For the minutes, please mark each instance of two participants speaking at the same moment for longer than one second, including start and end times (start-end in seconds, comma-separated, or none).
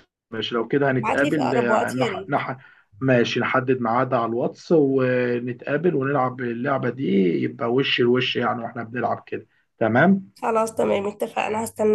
1.0-2.4